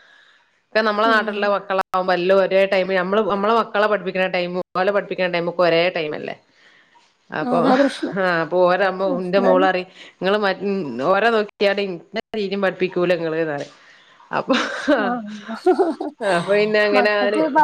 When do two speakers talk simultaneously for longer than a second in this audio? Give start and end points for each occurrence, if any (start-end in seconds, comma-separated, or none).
none